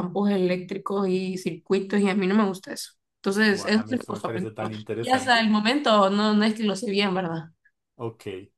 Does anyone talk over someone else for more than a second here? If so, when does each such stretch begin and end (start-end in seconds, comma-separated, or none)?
3.5-5.5